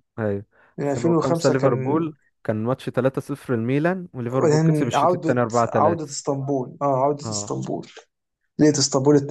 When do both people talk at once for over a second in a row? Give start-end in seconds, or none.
0.8-2.1, 4.4-6.2